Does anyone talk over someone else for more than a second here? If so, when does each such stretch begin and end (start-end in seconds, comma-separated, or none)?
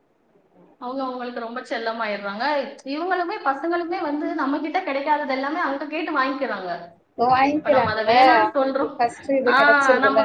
none